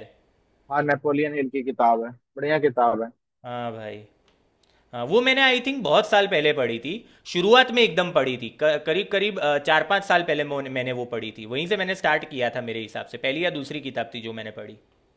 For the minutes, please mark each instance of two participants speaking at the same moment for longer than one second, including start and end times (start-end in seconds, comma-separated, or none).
none